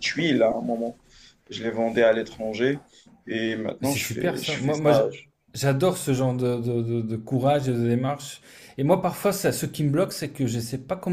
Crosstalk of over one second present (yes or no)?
yes